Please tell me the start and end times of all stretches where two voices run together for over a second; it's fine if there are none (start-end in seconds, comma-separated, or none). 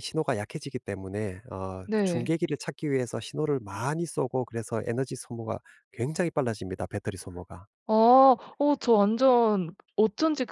none